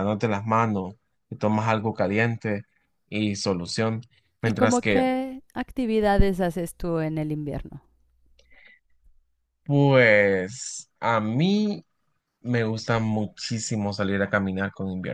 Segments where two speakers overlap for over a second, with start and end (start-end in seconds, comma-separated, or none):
none